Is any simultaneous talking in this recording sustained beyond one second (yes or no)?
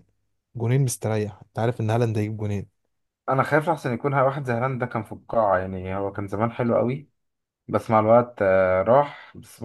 no